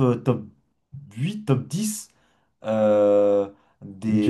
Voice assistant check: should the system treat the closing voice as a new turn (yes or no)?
no